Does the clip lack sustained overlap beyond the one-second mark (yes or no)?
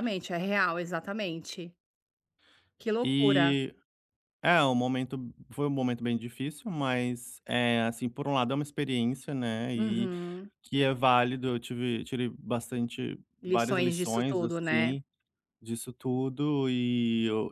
no